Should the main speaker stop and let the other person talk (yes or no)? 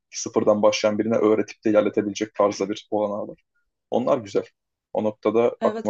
yes